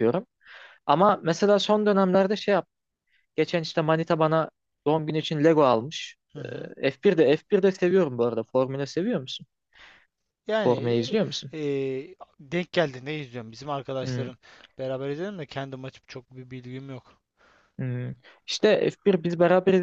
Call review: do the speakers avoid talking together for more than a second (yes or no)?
yes